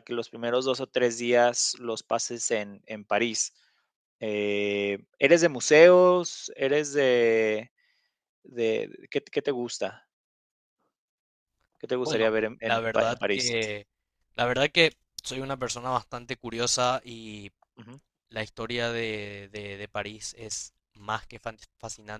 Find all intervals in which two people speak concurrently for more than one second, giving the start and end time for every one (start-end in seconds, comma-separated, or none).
12.0-13.6